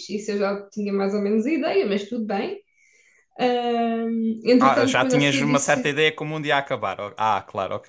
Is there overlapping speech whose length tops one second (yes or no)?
yes